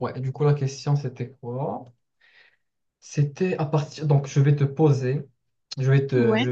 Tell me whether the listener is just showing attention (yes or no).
yes